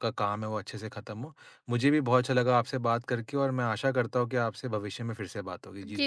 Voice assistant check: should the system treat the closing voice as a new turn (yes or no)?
yes